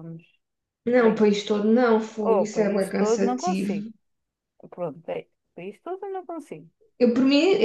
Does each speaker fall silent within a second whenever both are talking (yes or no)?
no